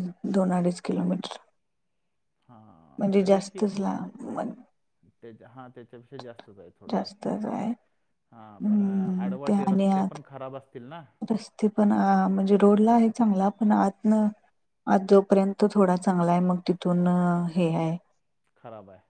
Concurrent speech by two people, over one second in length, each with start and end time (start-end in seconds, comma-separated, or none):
8.5-10.2